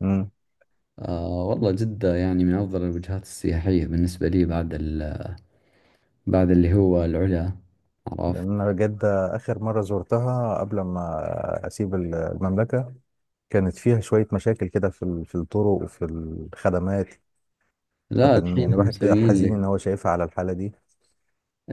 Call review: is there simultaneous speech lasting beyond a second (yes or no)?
yes